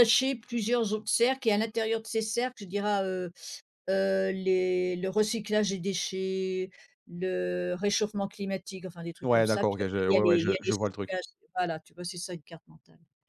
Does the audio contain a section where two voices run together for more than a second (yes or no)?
yes